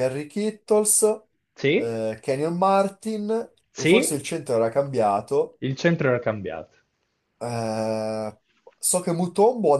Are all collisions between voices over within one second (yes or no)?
yes